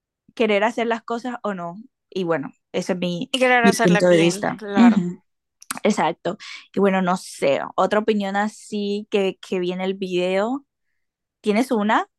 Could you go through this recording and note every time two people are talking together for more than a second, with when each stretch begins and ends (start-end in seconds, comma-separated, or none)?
3.3-5.0